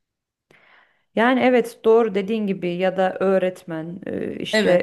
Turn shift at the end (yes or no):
no